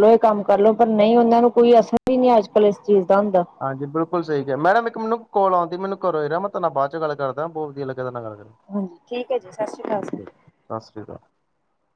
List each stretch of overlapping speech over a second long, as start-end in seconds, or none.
none